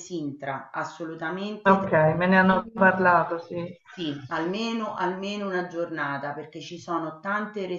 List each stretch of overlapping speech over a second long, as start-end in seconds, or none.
1.6-3.0